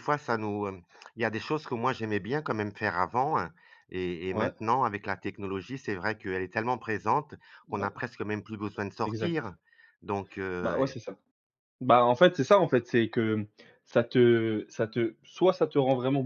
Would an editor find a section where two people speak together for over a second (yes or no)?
no